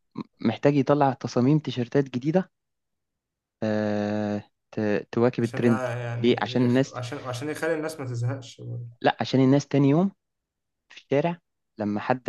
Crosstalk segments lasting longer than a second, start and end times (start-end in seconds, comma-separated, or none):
5.4-6.9